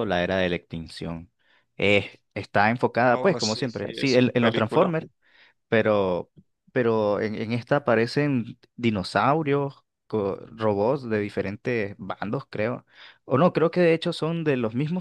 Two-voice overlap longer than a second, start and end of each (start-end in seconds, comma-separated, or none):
3.1-4.9